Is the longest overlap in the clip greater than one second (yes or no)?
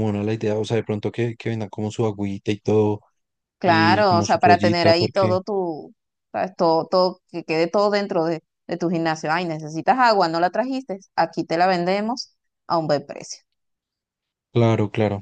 yes